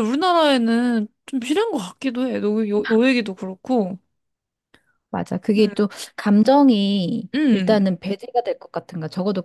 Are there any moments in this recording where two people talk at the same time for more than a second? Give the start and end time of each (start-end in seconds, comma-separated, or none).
none